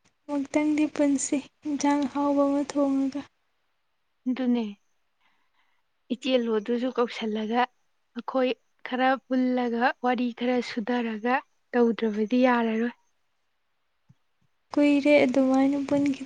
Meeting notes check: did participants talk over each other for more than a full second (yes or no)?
no